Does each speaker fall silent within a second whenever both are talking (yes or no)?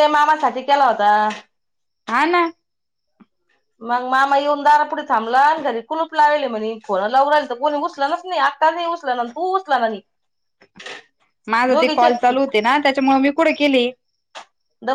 yes